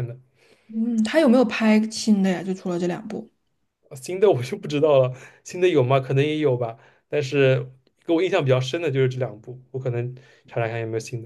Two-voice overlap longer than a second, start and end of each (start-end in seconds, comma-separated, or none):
none